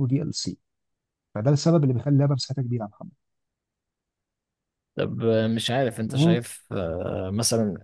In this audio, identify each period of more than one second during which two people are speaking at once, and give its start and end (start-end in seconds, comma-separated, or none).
none